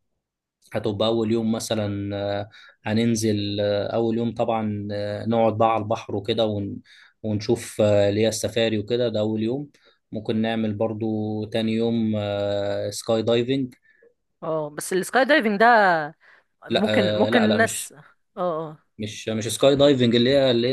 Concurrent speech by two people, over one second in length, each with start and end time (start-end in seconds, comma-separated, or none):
16.7-17.9